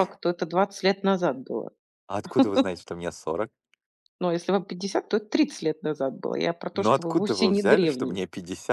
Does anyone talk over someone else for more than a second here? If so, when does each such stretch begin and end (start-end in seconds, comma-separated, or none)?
6.7-8.2